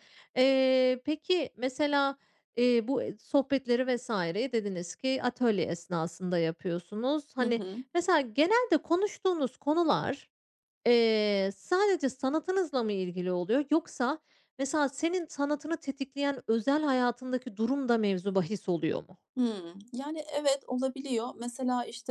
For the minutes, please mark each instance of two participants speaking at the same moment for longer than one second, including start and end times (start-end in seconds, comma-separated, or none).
none